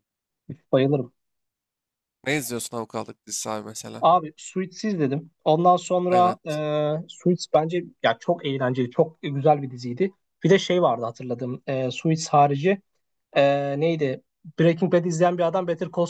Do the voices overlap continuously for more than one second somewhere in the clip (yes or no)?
no